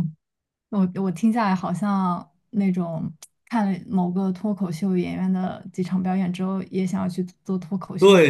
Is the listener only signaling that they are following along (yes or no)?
no